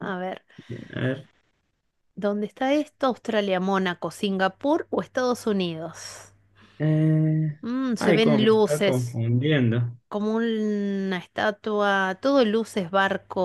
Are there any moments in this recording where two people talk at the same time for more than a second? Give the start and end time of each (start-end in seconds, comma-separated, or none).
8.0-9.2